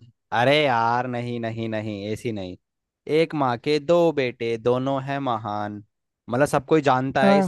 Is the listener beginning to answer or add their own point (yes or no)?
no